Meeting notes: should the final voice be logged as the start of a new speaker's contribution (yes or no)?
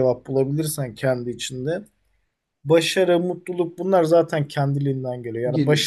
no